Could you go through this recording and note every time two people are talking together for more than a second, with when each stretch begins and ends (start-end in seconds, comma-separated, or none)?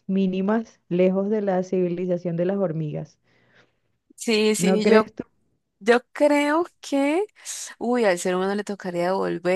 none